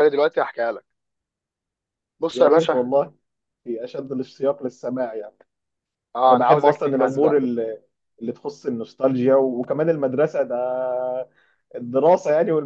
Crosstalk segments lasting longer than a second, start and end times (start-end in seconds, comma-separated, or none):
6.3-7.5